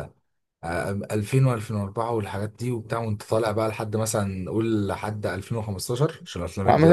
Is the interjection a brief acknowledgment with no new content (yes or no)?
no